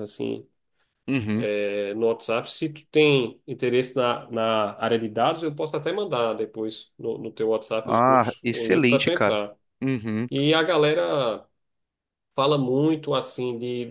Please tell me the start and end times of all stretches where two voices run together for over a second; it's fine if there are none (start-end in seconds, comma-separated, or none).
7.8-9.4